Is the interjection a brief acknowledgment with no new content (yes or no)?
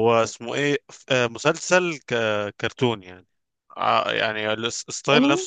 yes